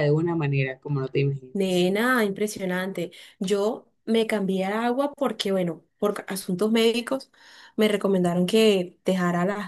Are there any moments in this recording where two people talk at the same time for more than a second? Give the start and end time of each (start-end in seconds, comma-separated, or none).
none